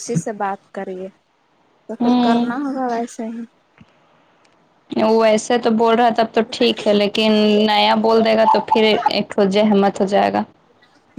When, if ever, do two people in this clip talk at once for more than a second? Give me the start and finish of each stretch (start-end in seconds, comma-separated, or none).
none